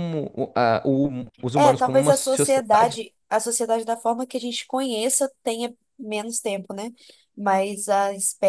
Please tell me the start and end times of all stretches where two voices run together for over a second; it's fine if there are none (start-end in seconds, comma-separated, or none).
1.5-3.0